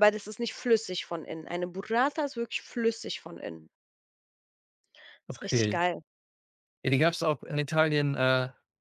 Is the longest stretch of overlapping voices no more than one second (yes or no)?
yes